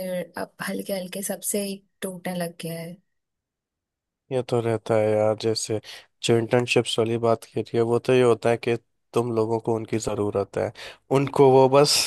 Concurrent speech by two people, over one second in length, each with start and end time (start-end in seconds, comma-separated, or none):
none